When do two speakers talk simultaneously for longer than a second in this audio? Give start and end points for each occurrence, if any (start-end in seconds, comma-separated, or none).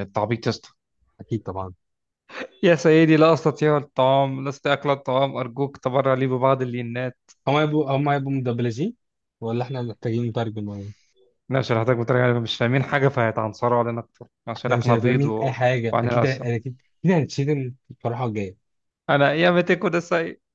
14.6-16.5